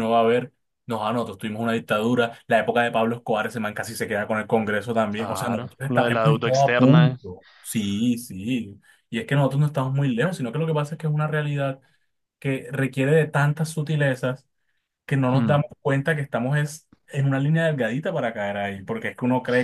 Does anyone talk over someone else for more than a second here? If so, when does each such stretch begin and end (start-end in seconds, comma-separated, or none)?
5.2-7.2